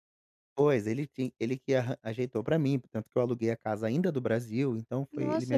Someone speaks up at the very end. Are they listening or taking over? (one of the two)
taking over